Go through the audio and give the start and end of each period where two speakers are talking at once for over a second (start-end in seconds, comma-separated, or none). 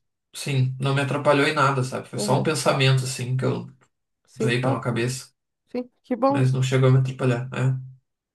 none